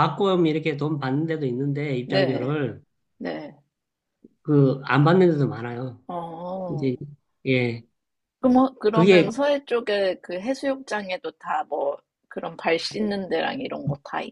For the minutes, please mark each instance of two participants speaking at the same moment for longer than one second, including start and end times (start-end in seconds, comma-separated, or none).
none